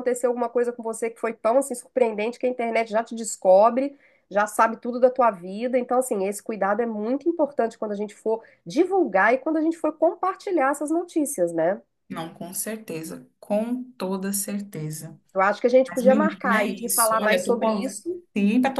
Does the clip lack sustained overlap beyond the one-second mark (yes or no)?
no